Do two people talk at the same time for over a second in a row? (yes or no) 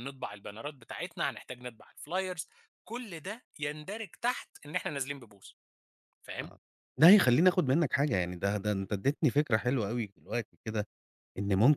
no